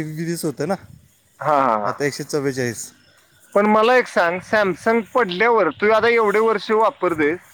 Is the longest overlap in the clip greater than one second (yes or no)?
no